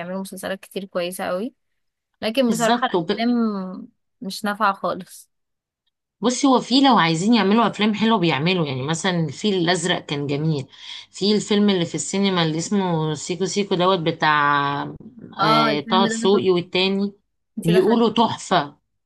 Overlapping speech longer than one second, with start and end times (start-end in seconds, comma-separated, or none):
15.4-16.7